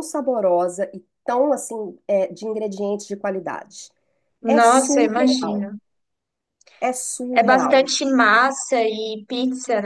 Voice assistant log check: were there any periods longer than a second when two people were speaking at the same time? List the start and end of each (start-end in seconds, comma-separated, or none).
4.5-5.7